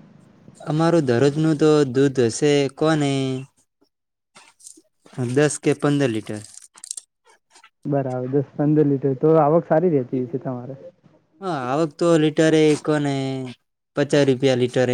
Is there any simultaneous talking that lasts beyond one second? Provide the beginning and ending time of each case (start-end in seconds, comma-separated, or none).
none